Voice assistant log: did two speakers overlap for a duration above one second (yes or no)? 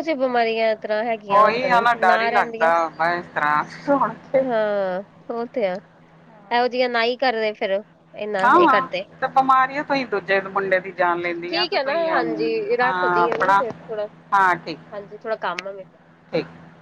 yes